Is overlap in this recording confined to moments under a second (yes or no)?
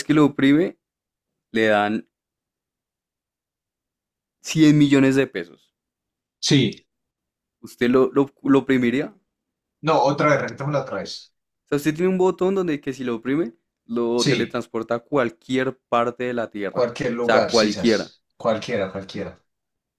no